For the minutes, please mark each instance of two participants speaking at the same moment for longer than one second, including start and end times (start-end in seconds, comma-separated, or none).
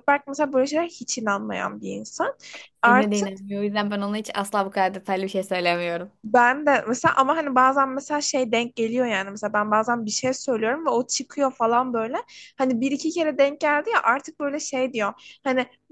none